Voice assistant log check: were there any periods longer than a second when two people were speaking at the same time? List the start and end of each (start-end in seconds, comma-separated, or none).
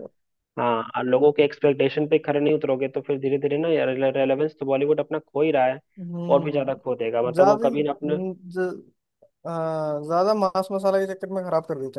6.3-8.2